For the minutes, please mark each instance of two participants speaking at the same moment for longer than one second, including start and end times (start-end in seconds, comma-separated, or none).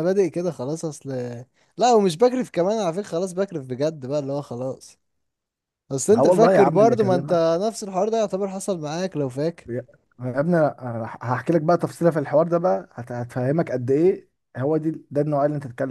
6.1-7.5